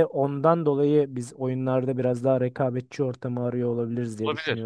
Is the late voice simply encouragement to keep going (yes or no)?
no